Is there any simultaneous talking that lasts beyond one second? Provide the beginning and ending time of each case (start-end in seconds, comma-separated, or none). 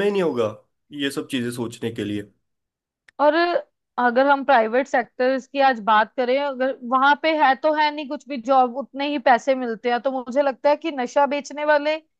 none